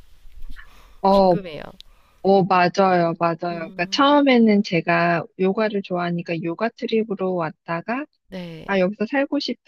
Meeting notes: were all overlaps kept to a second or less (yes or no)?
yes